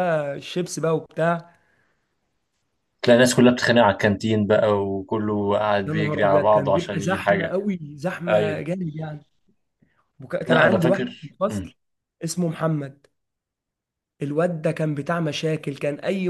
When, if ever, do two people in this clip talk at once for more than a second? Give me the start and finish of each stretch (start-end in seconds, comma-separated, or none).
5.9-7.5, 10.5-11.7